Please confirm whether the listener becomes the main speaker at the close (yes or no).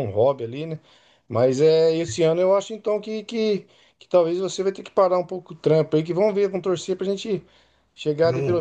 no